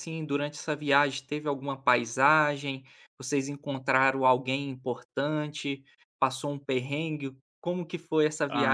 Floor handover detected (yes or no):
yes